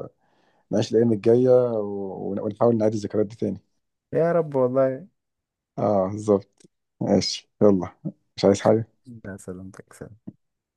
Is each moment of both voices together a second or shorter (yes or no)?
yes